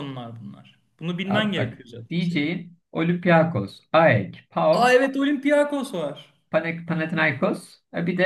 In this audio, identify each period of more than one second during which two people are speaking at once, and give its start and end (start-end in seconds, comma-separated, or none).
1.2-2.5